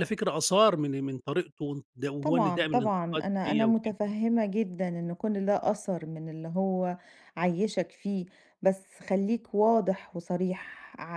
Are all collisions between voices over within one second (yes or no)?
no